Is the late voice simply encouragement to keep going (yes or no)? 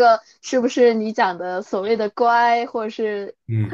no